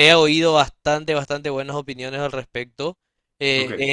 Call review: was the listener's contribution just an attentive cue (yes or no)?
yes